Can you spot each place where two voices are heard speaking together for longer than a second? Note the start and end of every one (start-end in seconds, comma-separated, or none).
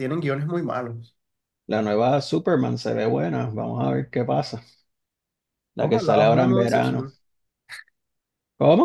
5.8-7.1